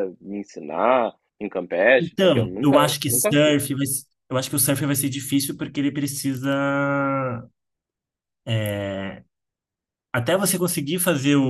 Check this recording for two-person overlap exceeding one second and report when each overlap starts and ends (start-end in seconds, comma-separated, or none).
2.0-3.6